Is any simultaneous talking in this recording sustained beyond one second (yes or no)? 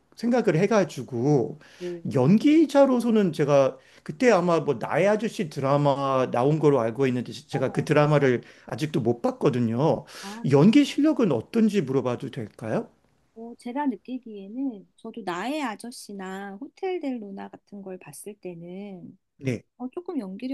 no